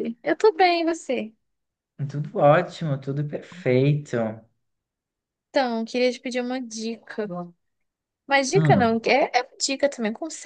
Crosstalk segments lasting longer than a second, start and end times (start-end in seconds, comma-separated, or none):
none